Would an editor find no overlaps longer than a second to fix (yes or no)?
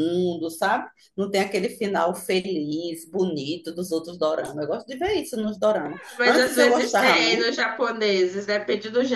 no